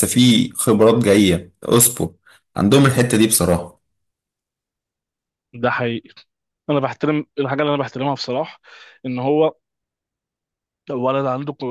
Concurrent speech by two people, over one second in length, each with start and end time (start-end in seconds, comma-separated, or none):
none